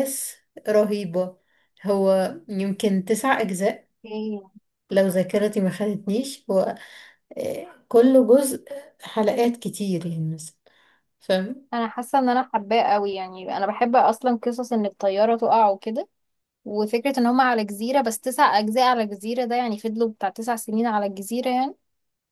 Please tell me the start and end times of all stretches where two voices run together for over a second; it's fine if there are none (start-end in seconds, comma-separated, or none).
none